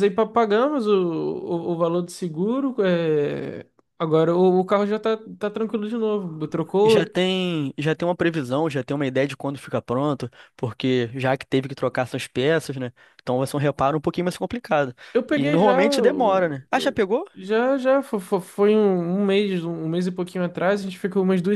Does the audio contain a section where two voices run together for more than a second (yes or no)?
yes